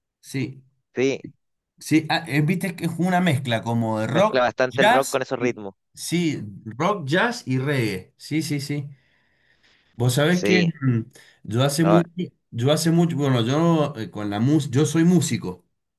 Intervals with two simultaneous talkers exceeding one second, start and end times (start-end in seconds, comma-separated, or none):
4.1-5.7